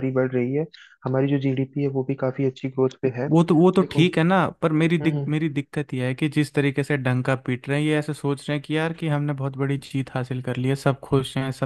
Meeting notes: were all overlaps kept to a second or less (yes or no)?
yes